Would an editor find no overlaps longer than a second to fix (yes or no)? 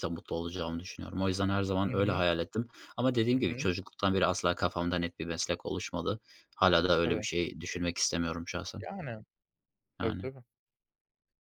yes